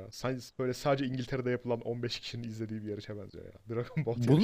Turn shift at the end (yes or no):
yes